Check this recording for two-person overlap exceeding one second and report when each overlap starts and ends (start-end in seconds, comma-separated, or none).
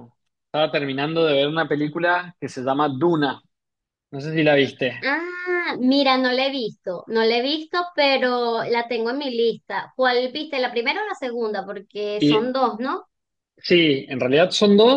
none